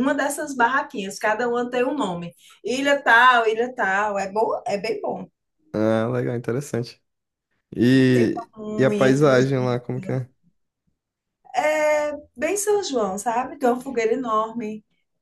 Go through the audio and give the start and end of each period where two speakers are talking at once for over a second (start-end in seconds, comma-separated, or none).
8.1-9.8